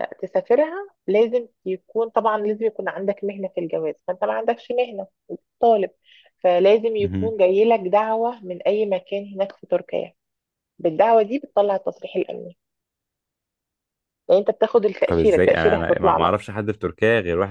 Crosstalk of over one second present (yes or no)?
yes